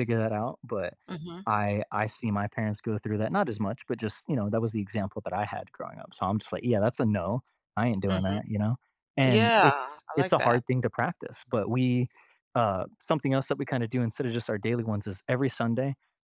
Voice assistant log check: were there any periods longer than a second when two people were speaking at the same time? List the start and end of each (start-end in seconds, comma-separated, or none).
9.2-10.6